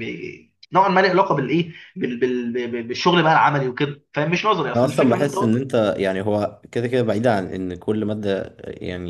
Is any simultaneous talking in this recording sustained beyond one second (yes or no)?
no